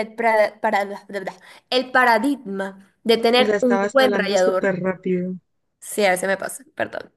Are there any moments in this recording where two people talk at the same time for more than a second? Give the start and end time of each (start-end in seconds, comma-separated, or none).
3.4-4.8